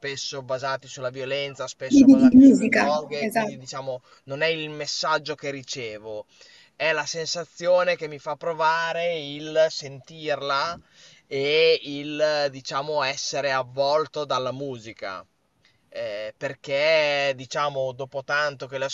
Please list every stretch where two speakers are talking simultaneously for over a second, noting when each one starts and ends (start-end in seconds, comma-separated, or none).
1.9-3.5